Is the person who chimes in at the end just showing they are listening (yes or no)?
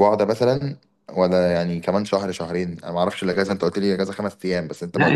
no